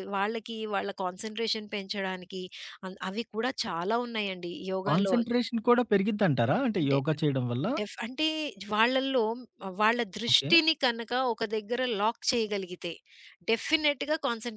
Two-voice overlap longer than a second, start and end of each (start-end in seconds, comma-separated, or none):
none